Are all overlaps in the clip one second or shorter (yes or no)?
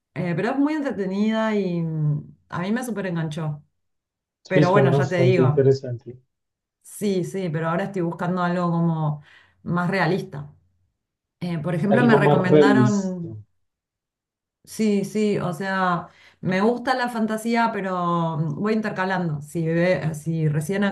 no